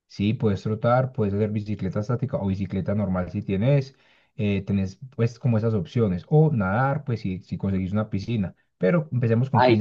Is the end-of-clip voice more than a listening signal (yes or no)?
yes